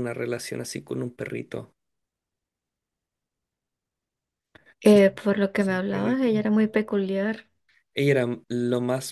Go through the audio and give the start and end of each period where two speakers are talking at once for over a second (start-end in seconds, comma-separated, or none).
4.8-6.7